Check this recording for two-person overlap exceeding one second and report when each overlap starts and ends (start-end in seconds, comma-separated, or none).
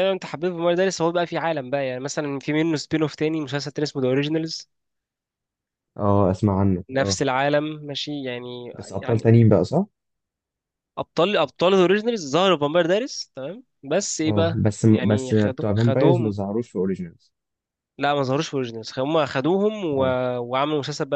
14.2-16.4